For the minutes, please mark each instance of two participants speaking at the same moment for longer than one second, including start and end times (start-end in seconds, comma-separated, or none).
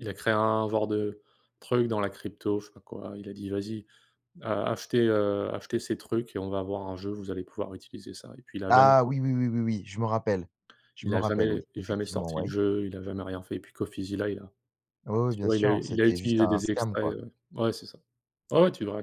11.0-12.5, 15.3-17.1